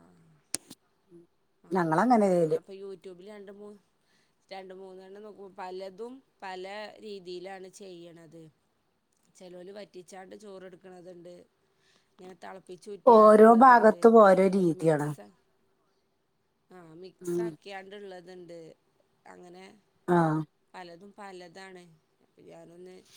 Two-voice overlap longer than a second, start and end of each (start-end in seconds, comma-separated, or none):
13.2-15.1